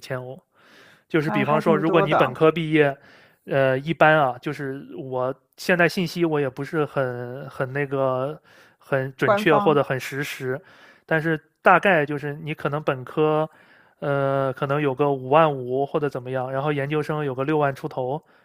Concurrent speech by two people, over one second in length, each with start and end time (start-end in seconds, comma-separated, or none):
1.1-2.4